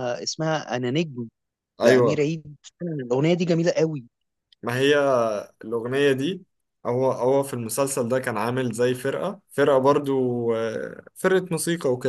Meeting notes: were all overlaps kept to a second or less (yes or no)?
yes